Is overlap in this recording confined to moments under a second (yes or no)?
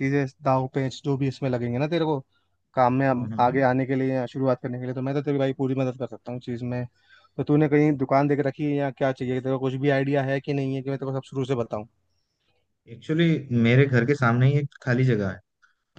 yes